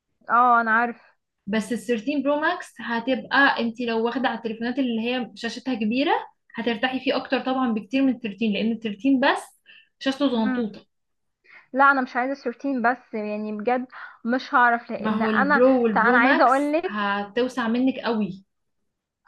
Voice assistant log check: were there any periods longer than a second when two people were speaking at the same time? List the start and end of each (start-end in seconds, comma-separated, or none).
15.0-17.0